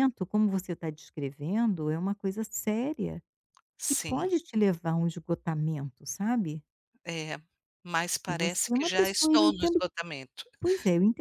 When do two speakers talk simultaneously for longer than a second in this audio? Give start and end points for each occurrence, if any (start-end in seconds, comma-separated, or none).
8.3-9.8